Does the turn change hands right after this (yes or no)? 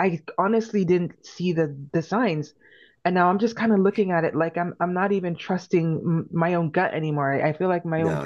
yes